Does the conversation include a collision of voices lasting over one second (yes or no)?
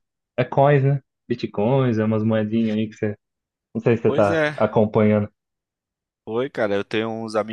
no